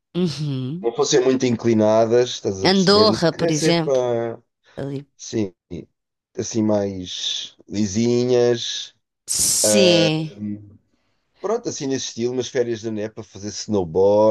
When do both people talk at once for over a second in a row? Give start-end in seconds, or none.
2.6-4.0